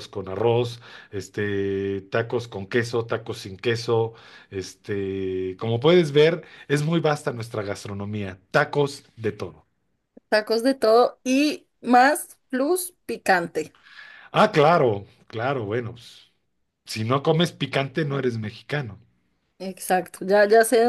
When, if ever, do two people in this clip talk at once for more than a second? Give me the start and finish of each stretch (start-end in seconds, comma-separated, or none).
none